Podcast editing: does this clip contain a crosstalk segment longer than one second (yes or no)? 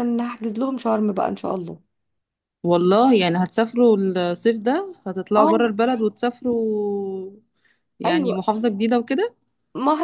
no